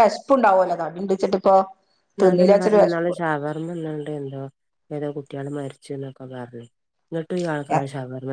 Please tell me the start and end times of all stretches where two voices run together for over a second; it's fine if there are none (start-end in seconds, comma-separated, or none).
none